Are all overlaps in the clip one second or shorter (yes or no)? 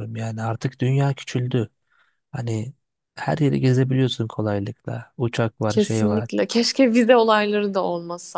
yes